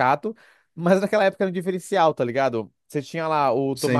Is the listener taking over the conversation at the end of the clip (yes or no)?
no